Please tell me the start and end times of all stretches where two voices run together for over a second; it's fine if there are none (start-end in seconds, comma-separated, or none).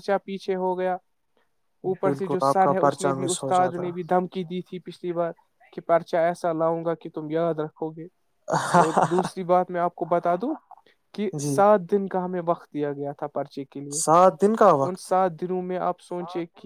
2.0-3.9